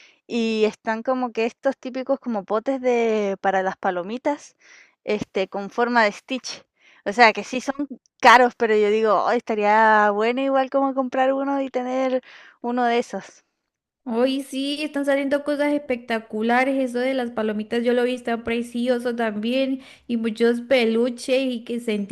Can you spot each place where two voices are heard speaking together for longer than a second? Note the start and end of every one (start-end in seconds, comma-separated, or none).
none